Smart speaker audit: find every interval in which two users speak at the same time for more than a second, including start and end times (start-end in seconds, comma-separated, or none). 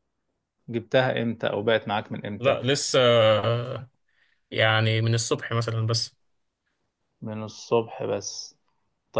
none